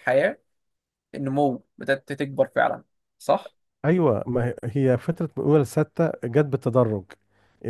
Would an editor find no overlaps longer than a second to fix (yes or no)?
yes